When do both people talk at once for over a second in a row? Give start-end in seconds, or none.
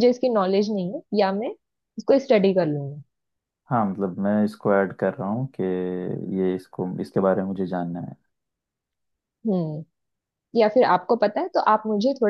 none